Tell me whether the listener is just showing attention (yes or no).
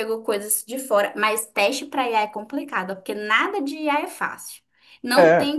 yes